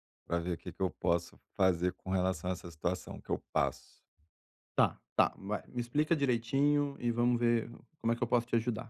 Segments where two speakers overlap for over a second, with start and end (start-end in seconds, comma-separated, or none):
none